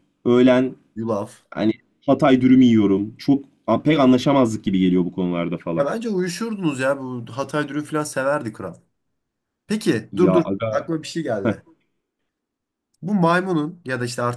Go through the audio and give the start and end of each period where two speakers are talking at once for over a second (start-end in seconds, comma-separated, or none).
none